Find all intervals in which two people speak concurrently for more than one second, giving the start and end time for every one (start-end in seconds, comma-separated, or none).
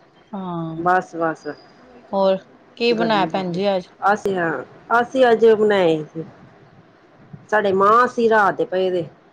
none